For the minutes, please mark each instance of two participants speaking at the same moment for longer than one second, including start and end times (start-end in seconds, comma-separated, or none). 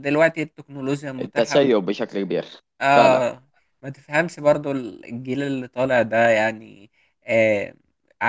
none